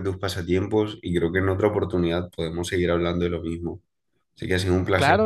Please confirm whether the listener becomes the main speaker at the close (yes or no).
yes